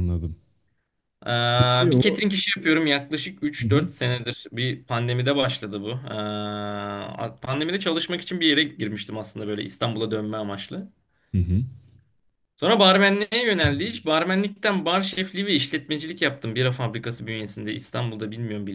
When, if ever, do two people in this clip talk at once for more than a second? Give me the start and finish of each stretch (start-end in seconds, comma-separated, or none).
none